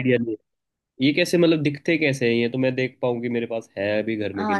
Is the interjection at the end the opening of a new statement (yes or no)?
yes